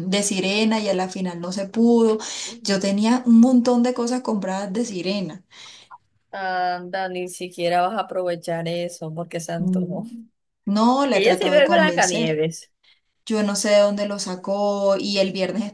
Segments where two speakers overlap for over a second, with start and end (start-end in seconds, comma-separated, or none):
11.1-12.4